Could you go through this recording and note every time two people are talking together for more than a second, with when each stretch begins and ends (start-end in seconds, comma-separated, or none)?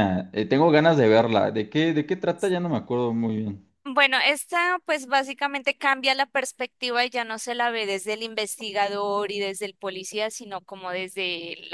none